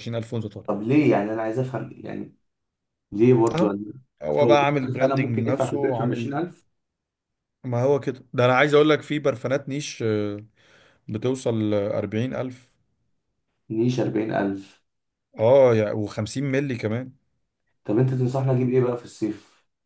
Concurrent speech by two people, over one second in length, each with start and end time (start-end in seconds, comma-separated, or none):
4.4-6.3